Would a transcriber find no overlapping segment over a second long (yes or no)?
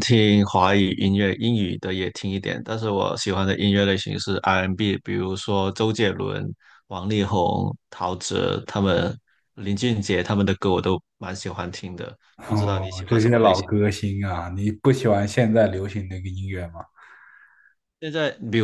no